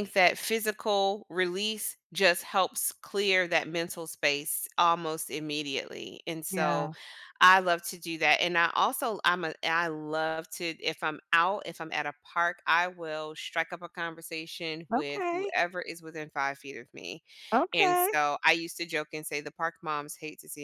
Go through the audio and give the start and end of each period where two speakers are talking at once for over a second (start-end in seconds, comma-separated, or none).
none